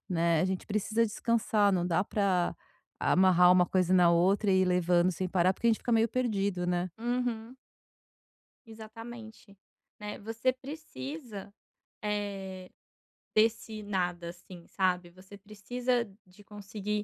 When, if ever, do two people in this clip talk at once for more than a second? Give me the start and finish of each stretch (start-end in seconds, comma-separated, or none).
none